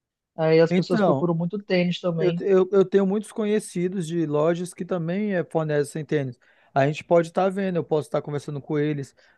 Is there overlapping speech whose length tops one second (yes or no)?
no